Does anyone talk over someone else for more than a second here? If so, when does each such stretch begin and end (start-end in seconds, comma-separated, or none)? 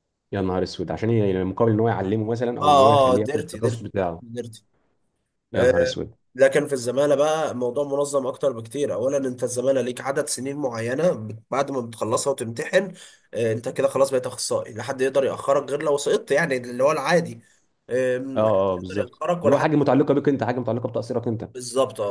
2.6-3.8, 18.4-19.8